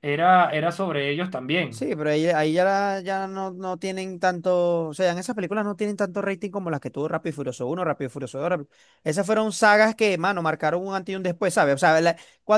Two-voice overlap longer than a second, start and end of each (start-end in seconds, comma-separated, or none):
none